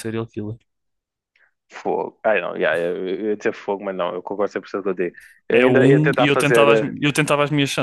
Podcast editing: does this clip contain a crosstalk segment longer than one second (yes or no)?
yes